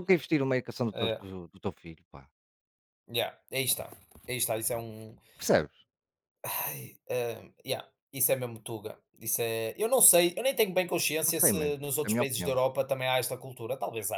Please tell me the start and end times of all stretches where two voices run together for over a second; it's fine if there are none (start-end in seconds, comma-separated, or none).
11.3-12.6